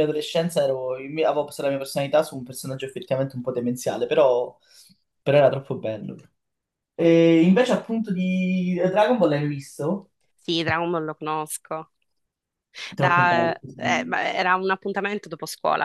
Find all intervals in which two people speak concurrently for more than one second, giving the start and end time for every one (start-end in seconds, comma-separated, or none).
none